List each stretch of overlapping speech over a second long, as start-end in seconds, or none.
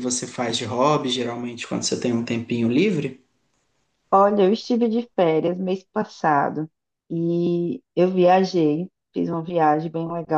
none